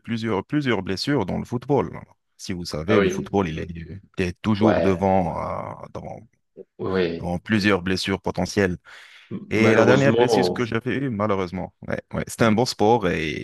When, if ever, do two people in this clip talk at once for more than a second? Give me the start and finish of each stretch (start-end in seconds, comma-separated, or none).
9.5-10.7